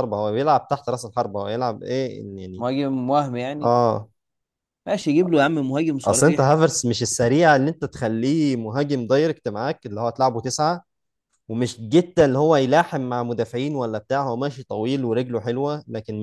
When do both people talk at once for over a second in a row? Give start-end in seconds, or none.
none